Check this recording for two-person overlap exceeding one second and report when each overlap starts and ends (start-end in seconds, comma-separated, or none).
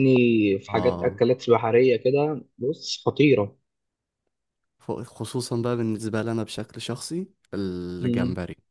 none